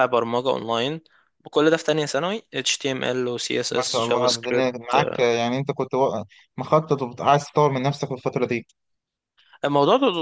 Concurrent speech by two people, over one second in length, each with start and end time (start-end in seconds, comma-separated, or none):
3.7-5.3